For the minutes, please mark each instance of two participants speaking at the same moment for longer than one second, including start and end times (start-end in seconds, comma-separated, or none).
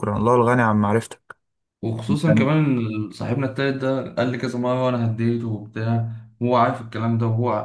none